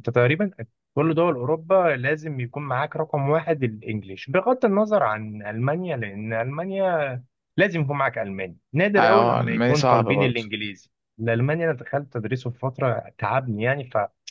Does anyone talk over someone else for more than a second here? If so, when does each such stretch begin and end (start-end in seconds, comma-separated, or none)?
9.0-10.5